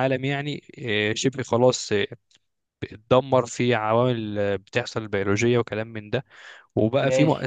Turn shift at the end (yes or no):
no